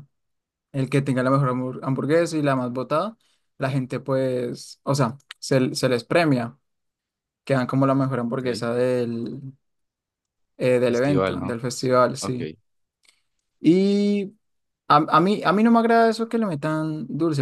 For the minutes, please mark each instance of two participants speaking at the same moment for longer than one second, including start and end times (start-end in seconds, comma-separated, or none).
10.8-12.4